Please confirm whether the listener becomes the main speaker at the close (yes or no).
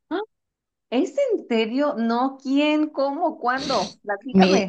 yes